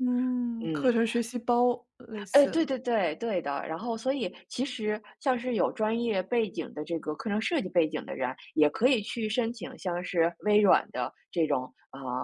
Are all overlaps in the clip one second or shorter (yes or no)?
yes